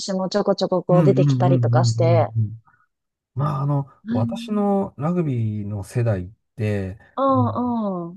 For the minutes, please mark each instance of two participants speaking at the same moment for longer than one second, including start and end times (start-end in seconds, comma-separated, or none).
0.9-2.3